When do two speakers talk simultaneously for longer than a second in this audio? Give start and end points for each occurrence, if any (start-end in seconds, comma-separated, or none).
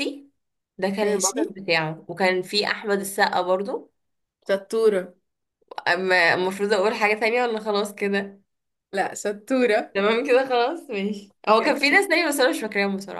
none